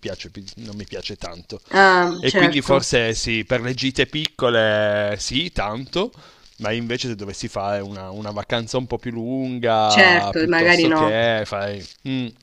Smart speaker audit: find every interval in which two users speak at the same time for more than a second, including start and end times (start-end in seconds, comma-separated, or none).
9.8-11.2